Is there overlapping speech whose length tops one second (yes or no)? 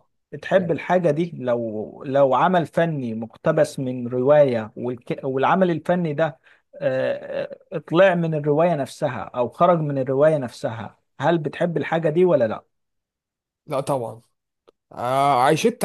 no